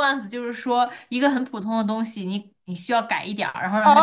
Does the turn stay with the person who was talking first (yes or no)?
no